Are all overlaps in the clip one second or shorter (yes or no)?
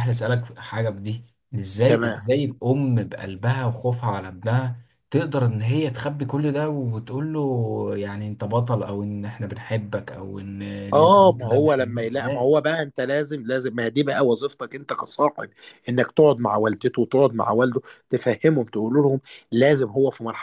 no